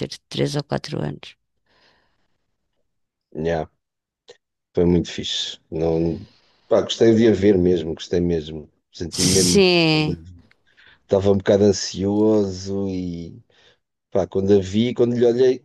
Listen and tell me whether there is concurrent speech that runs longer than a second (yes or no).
no